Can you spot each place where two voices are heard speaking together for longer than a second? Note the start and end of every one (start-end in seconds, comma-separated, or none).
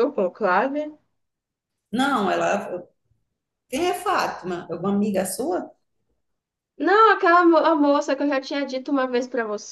none